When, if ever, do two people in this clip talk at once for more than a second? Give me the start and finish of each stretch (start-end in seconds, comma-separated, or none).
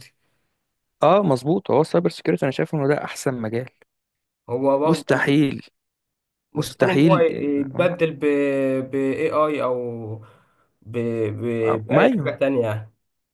6.5-7.9